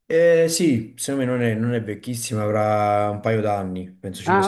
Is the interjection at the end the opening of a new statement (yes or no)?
yes